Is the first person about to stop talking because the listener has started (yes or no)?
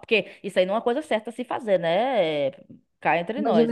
yes